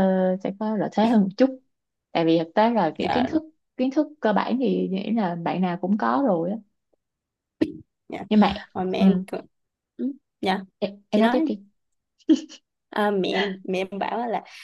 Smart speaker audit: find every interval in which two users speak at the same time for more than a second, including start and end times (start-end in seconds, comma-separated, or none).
none